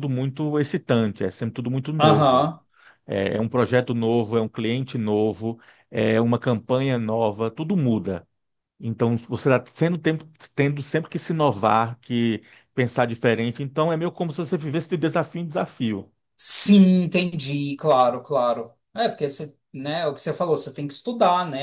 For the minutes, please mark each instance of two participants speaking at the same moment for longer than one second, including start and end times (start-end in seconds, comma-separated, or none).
none